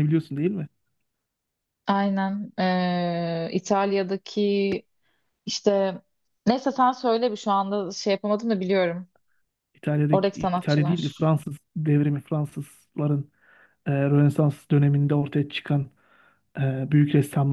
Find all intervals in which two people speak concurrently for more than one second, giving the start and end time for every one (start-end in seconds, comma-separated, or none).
10.1-11.3